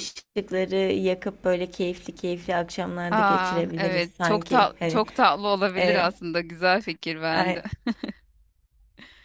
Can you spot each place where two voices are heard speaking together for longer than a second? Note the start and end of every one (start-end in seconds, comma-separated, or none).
3.1-5.0